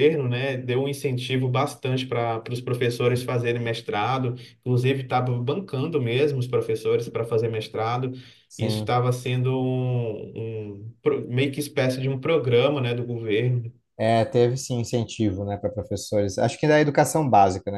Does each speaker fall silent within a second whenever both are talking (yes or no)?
yes